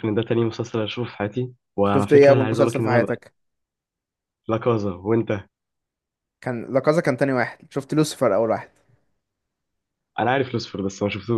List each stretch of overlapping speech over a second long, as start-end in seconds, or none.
1.8-3.2